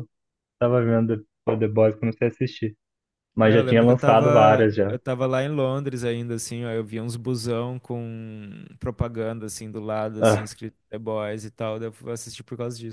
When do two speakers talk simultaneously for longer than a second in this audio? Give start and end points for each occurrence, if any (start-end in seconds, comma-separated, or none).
3.4-5.0